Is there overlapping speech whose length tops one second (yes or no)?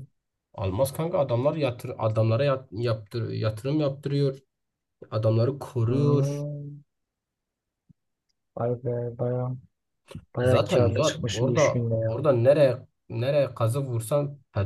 yes